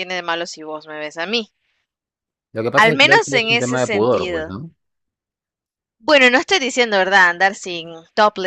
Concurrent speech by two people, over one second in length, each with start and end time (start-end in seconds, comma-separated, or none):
2.7-4.5